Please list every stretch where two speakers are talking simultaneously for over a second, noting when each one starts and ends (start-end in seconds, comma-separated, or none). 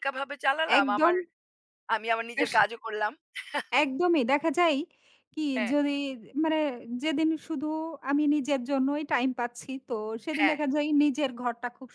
none